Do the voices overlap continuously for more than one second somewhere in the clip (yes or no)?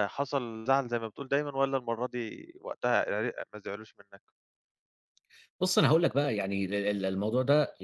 no